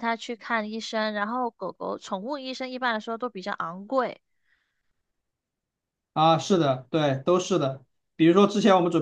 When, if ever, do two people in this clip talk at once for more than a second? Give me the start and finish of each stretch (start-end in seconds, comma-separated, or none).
none